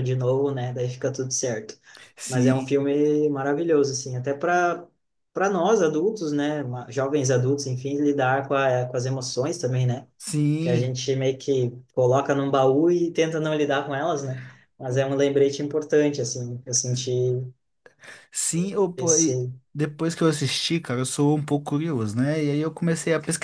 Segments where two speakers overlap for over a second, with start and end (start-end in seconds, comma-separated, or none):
none